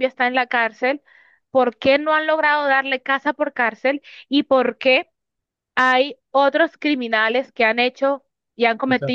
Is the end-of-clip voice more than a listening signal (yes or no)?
no